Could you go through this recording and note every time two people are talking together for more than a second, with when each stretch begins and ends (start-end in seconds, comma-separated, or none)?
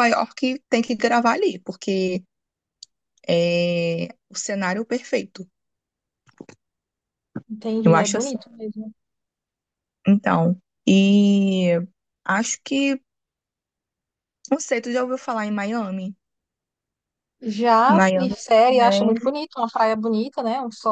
17.9-19.4